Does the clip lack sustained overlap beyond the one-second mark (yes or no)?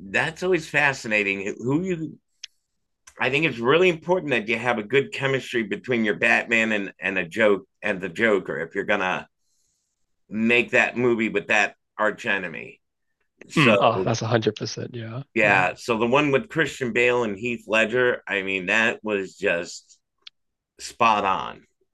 yes